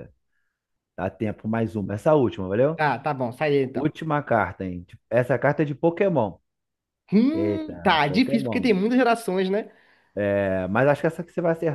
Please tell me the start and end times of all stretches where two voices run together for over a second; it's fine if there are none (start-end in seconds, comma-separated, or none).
7.3-8.7